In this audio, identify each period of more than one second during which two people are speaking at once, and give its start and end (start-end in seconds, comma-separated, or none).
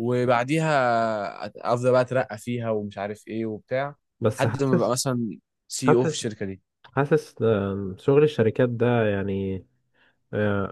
none